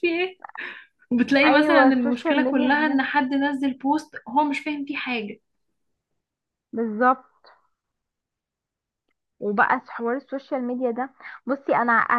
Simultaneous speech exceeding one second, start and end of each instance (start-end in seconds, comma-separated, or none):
1.4-3.0